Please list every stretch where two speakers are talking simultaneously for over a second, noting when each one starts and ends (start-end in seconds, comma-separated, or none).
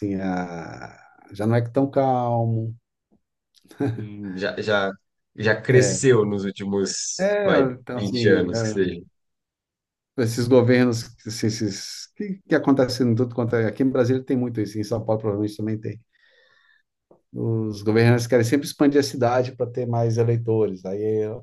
7.2-8.9